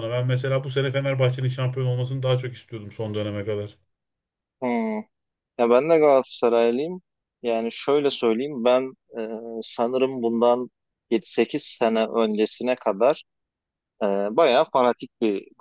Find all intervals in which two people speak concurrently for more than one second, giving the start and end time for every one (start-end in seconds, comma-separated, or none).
none